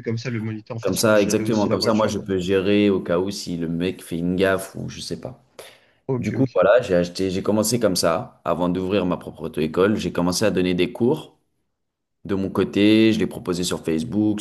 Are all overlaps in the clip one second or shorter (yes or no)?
no